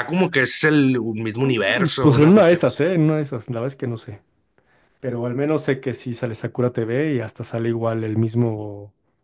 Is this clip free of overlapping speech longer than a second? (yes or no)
no